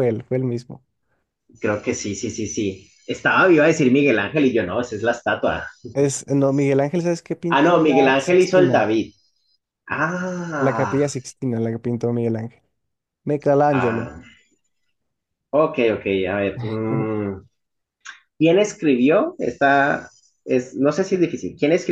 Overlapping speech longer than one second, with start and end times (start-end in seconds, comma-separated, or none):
7.5-8.9